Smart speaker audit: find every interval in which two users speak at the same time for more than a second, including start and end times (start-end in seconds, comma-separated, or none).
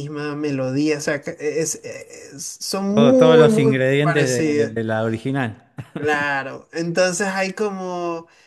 2.9-4.7